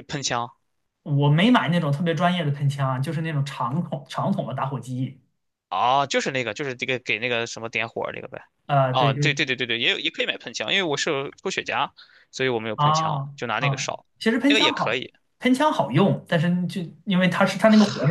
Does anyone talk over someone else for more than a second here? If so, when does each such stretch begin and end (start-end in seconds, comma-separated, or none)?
12.8-15.1